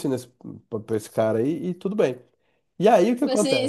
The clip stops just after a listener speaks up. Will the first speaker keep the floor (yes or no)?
no